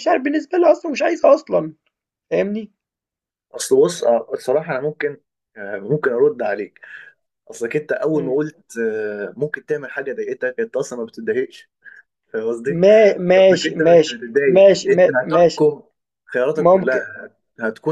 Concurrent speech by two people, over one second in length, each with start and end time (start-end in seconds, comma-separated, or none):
13.4-15.6